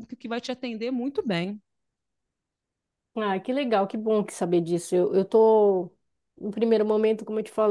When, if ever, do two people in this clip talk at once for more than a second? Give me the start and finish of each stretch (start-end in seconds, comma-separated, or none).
none